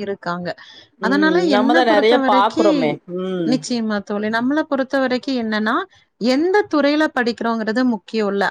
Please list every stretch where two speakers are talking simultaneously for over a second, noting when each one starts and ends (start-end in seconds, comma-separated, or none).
1.1-2.7